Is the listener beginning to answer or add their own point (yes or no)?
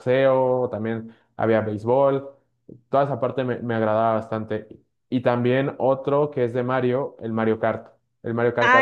yes